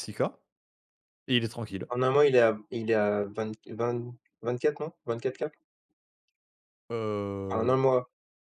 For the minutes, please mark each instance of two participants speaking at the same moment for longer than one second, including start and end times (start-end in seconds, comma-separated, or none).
none